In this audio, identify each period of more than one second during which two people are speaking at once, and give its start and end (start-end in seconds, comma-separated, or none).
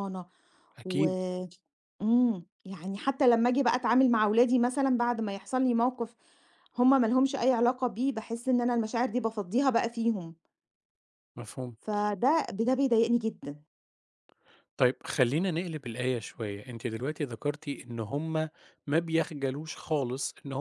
none